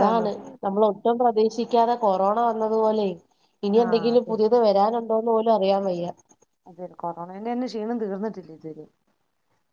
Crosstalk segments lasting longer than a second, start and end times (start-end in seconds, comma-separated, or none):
none